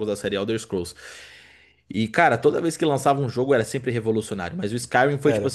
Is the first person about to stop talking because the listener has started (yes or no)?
no